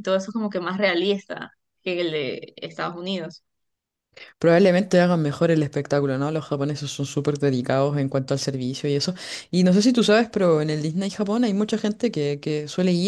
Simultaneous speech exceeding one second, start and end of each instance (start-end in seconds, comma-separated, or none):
none